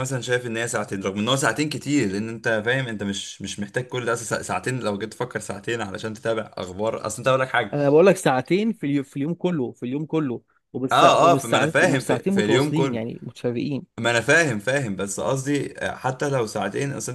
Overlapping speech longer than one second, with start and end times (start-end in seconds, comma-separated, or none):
10.9-13.0